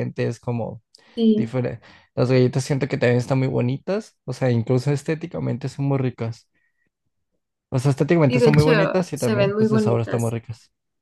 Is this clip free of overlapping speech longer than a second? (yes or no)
no